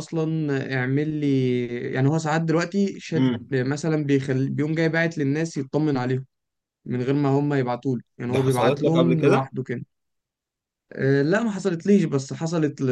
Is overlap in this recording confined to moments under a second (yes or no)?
no